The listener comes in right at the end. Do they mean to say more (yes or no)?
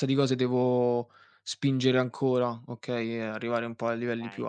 yes